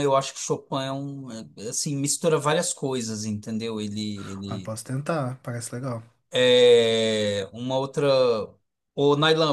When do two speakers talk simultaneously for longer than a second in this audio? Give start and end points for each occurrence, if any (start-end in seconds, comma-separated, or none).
none